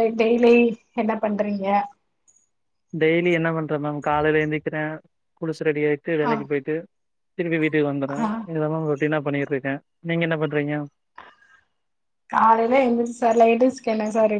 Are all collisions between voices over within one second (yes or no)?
yes